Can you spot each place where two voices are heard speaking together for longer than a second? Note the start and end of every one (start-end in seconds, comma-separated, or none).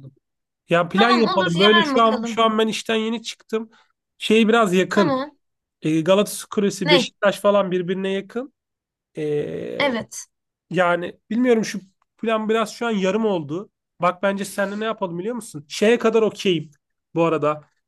1.0-2.5